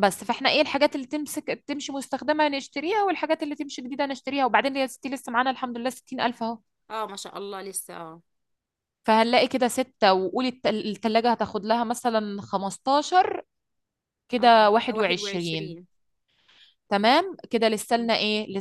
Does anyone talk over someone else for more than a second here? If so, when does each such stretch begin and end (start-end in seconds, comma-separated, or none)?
14.4-15.8